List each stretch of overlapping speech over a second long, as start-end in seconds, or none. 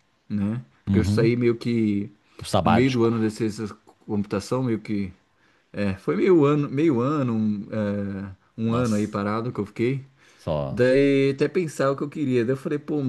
none